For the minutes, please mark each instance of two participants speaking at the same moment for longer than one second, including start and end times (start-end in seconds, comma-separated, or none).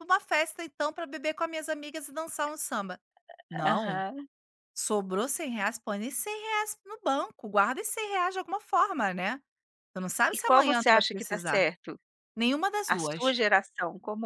10.3-11.7